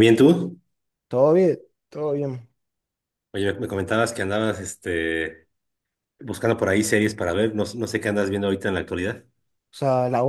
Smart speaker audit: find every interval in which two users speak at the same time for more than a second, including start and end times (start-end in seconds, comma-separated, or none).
none